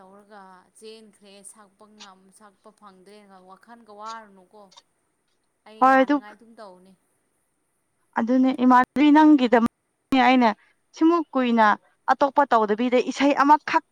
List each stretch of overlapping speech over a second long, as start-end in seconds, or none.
none